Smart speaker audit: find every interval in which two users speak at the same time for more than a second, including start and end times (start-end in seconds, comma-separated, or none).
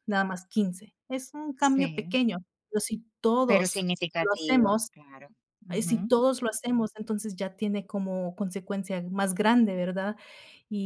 3.5-4.9